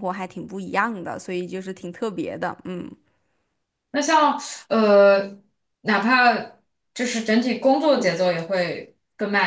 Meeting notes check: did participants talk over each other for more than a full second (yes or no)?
no